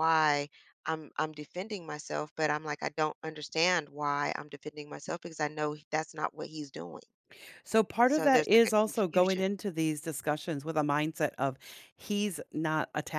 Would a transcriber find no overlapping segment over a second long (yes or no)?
no